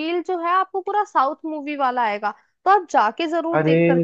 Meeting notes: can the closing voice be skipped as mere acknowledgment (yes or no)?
no